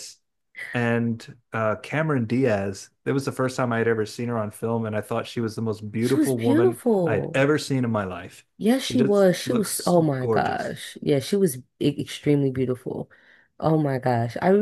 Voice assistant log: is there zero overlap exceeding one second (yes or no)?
no